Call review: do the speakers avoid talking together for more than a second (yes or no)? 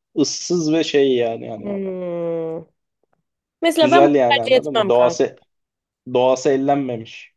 no